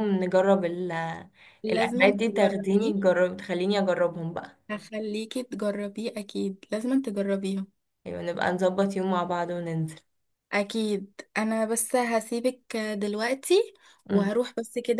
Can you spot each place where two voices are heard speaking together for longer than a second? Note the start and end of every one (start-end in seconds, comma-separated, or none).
1.7-2.9